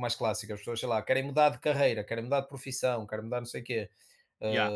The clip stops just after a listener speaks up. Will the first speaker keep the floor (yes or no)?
yes